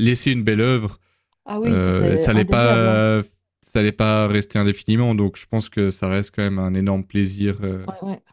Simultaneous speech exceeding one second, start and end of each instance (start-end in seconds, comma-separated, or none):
1.7-3.0